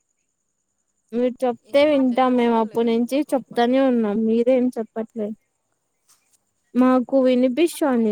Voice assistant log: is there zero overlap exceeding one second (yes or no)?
no